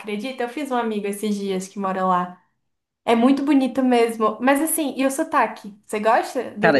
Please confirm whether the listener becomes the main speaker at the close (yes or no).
yes